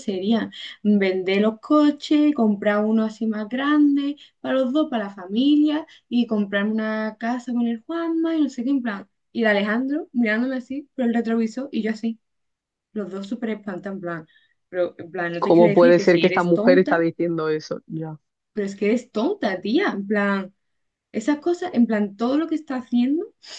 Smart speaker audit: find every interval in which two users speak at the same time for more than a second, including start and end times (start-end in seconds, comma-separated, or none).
15.4-17.0